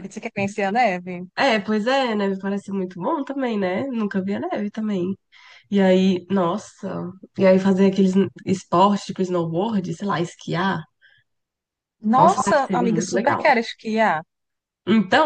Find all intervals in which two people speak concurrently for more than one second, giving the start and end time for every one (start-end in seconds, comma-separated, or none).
12.1-13.4